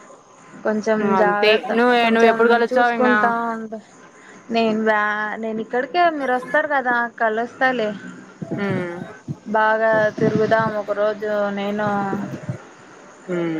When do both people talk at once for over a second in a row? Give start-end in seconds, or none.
1.2-3.3